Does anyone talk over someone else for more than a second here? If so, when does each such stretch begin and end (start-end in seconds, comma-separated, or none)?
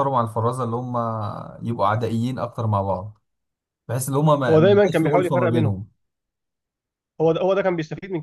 4.5-5.8